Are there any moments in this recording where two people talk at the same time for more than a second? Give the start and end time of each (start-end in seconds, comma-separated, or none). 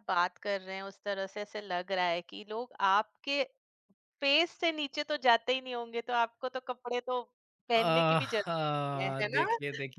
7.8-9.5